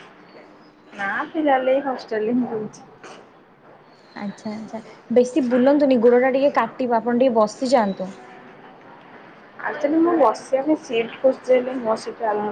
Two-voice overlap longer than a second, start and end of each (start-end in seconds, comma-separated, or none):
none